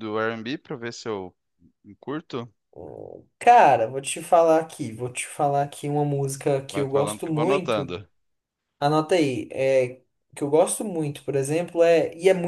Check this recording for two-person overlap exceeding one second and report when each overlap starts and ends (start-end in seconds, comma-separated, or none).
6.7-7.9